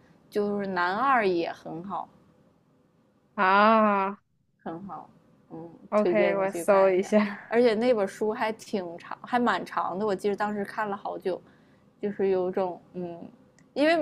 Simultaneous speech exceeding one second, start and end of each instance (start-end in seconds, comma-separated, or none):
5.9-7.4